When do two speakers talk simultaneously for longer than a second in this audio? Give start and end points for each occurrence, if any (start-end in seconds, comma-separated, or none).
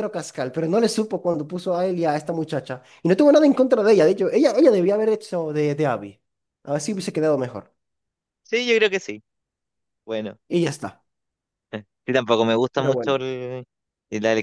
none